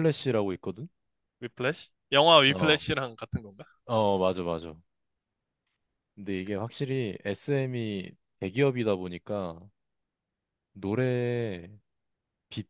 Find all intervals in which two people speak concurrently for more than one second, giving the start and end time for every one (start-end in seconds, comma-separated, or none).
none